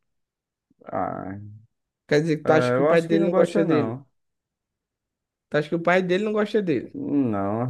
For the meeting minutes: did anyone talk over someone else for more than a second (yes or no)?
yes